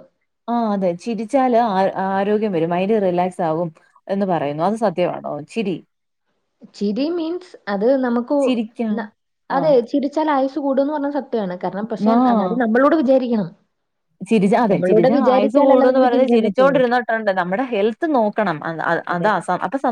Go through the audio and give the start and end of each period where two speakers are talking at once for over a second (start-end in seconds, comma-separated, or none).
14.7-16.8